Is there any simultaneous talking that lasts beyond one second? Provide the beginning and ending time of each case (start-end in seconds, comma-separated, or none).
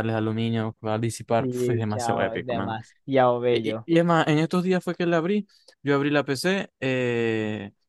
1.4-2.8